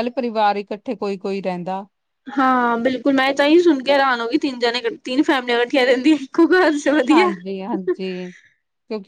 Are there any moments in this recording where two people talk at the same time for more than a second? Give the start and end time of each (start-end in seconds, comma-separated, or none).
none